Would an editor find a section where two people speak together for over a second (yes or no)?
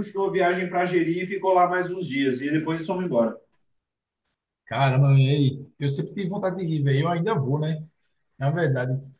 no